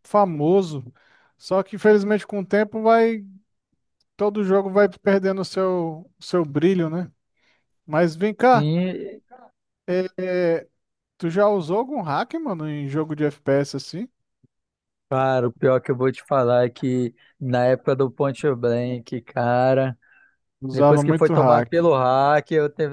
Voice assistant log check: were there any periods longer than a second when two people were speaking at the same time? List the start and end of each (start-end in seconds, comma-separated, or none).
20.7-21.9